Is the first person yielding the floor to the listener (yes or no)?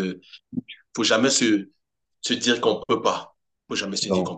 yes